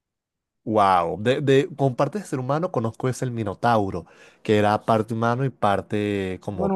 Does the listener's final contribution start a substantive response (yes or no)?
yes